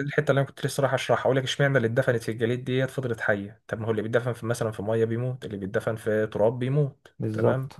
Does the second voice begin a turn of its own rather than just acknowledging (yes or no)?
no